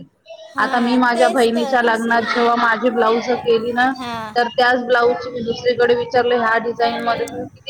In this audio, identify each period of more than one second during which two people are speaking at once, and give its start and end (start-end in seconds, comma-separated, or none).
0.6-2.4